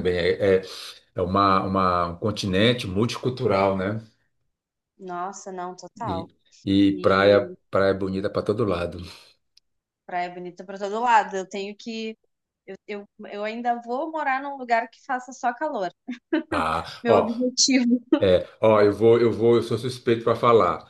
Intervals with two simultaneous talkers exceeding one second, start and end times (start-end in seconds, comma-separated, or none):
none